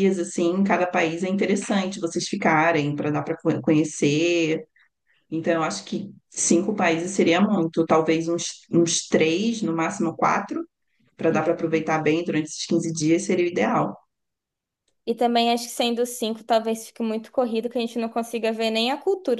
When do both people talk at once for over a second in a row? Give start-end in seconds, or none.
none